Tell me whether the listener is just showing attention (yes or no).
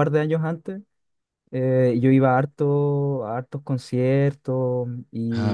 yes